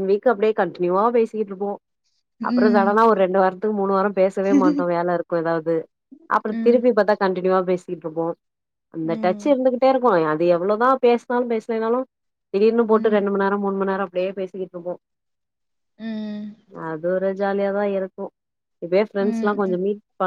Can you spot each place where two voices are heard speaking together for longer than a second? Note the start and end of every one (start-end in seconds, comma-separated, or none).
none